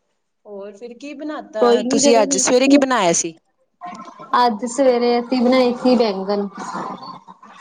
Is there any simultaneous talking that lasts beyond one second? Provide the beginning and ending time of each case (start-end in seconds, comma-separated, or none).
1.6-2.8